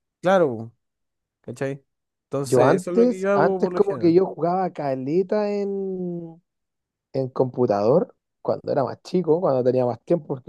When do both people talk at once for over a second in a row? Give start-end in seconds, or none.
2.4-4.1